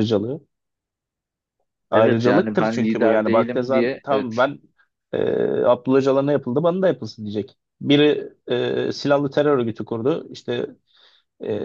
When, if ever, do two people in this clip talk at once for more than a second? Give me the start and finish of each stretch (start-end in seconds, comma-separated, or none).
1.9-4.3